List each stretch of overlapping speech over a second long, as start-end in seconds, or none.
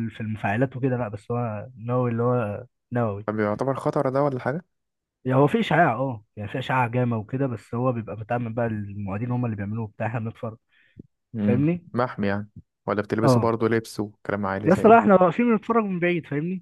none